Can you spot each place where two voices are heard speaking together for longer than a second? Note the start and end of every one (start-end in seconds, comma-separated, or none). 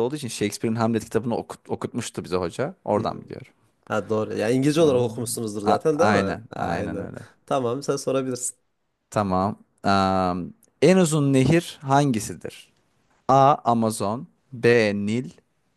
4.8-7.1